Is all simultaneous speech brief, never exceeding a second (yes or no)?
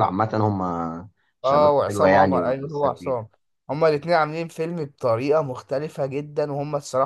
no